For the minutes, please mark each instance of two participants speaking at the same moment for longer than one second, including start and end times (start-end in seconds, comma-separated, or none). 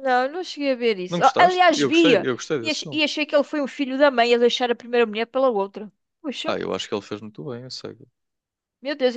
1.1-3.0